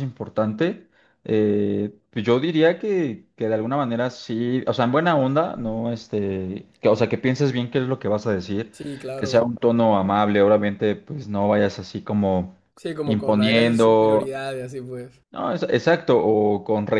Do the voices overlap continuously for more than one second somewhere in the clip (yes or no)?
yes